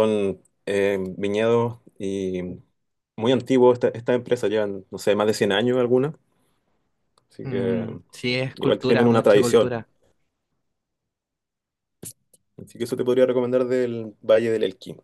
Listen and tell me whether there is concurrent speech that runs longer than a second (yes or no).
yes